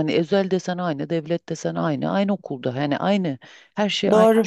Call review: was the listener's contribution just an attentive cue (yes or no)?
no